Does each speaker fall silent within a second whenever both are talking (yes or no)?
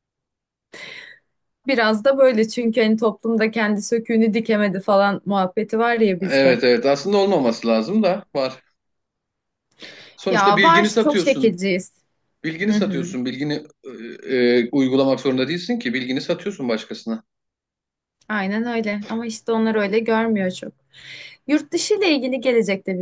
no